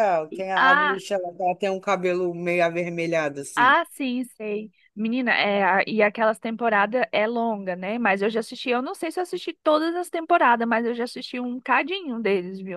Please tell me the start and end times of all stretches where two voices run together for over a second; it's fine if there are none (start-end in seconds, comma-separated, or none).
none